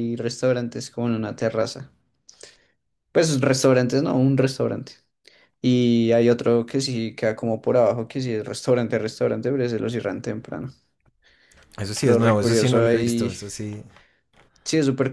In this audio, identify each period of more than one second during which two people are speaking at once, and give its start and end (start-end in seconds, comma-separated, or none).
12.0-13.4